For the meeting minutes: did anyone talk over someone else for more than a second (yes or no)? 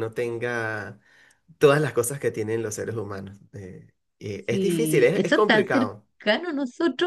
yes